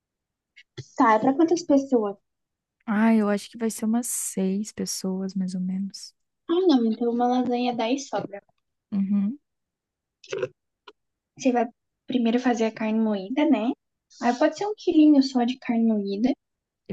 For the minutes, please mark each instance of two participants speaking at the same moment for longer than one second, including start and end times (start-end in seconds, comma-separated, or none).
none